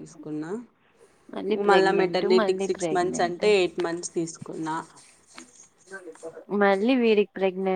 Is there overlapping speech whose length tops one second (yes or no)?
yes